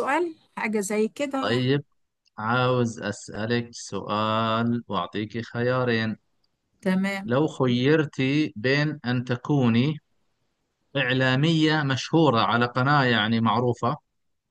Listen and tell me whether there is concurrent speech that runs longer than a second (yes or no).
no